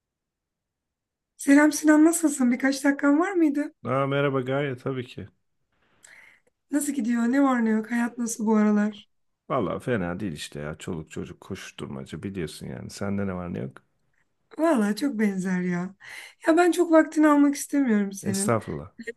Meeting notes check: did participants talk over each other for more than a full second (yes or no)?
no